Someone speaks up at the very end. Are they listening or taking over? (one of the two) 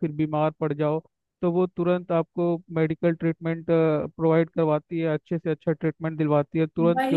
taking over